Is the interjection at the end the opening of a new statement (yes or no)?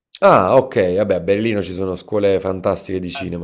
no